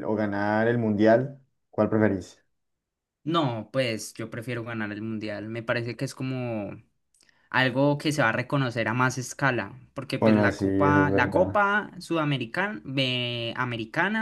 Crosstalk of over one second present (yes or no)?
yes